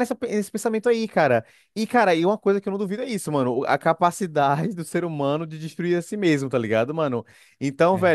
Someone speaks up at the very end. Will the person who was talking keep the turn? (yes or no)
yes